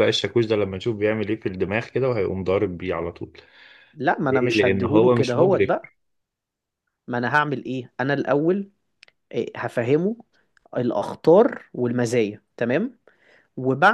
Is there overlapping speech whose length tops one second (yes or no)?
yes